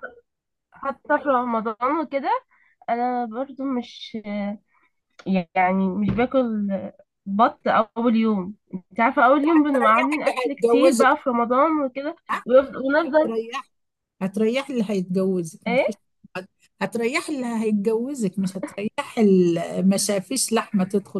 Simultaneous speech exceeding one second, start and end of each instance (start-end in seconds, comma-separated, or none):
9.8-11.2